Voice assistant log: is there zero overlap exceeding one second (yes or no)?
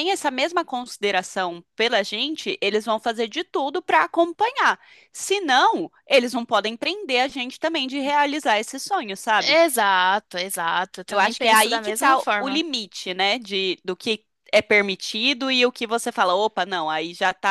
no